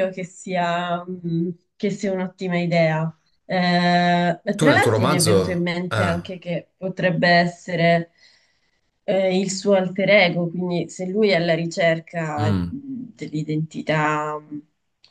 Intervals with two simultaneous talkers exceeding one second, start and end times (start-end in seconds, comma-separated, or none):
4.6-6.2